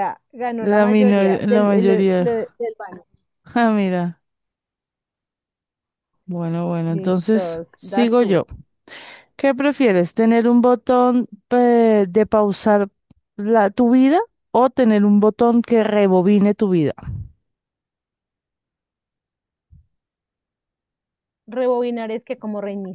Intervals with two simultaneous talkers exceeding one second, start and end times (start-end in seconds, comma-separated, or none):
0.6-2.5, 6.9-8.4